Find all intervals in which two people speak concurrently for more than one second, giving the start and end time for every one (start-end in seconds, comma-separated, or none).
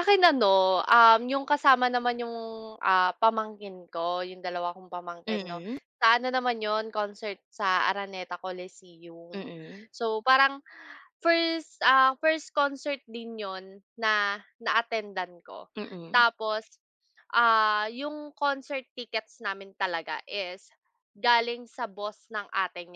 none